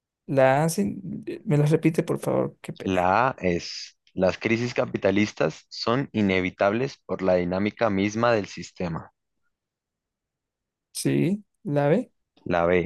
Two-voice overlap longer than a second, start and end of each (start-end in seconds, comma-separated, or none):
none